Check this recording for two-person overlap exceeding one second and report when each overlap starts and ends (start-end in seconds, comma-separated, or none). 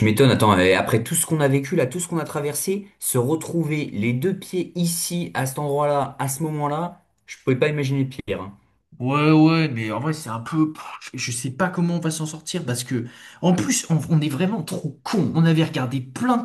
none